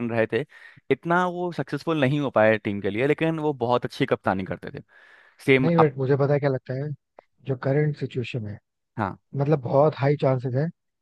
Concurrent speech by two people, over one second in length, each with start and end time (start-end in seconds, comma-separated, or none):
none